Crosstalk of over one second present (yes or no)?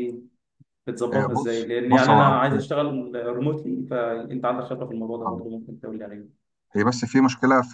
yes